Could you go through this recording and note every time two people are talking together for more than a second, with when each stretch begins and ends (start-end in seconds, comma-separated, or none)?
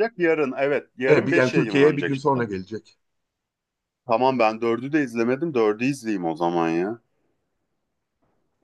1.1-2.4